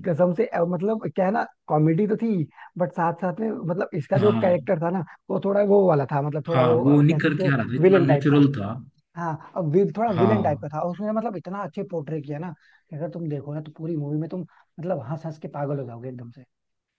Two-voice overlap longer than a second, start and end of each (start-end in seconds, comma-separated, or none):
6.5-8.4